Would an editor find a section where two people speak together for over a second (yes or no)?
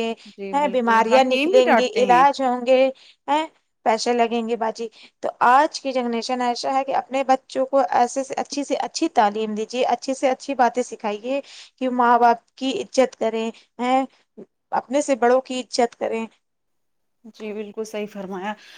yes